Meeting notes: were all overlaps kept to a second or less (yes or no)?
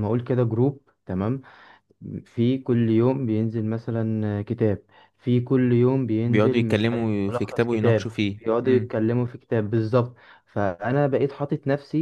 no